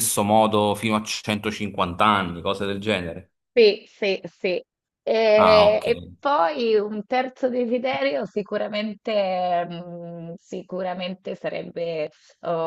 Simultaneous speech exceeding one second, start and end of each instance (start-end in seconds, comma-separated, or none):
none